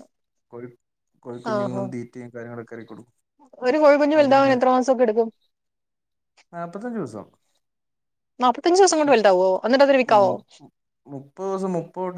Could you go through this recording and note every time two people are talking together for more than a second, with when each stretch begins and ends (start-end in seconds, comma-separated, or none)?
9.1-10.3